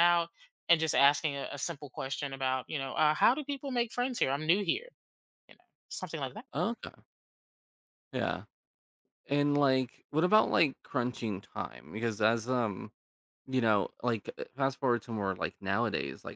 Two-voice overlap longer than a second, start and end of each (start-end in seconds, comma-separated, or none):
none